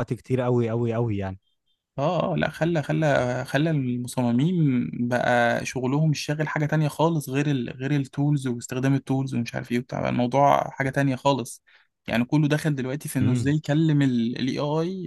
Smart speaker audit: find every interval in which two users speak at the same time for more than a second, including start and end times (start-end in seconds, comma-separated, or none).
none